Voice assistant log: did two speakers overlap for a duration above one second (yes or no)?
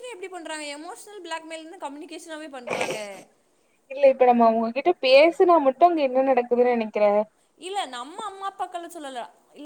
no